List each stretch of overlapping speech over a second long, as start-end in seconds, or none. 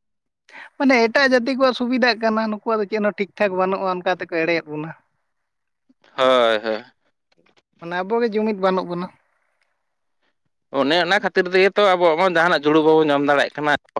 none